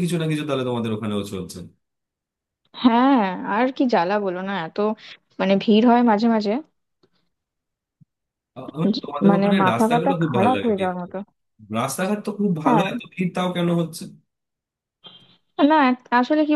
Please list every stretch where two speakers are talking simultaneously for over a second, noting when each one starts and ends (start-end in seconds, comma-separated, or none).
8.9-11.1